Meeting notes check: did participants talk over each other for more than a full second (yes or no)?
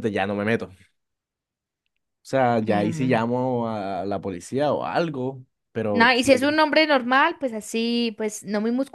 no